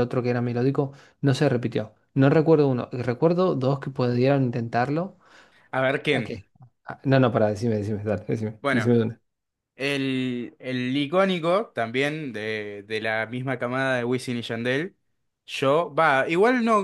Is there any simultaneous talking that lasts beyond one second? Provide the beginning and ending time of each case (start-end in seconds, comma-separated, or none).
none